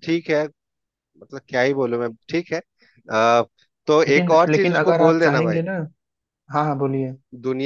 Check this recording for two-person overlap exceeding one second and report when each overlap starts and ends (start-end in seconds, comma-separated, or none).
4.1-5.6